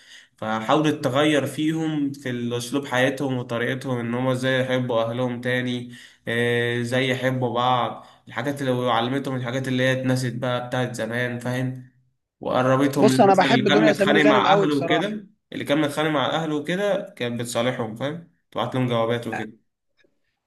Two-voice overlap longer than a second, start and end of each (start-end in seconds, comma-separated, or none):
13.0-15.2